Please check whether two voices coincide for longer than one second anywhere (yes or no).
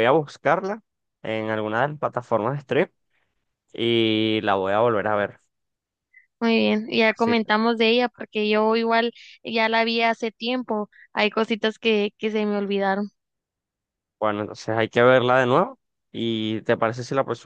no